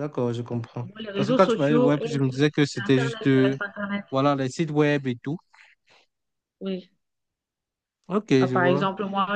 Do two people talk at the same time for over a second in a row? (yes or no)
yes